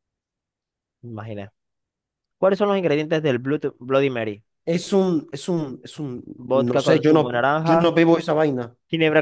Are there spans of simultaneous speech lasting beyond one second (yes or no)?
yes